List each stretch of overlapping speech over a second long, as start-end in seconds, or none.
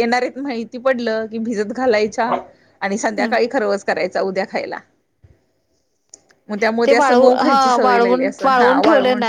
6.9-8.8